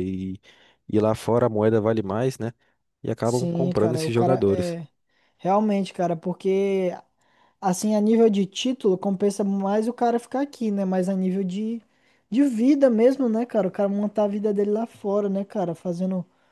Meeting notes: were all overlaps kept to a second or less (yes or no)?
no